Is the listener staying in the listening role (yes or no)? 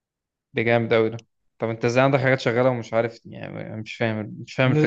no